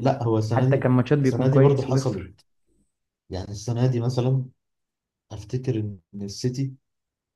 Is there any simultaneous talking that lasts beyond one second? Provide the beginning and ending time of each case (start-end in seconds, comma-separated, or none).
0.5-2.3